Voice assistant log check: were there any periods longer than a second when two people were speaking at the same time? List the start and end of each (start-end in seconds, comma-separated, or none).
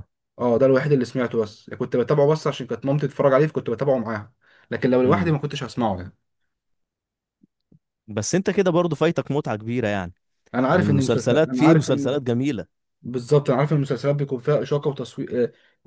10.7-12.2